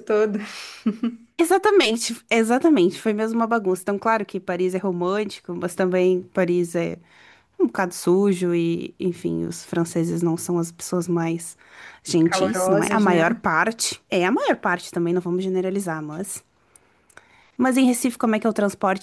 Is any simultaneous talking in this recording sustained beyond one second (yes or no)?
yes